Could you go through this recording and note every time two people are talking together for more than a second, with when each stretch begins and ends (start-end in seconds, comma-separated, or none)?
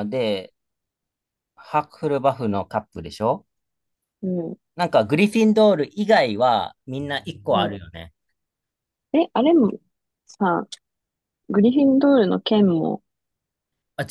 none